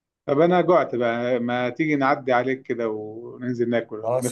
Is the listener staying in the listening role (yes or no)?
no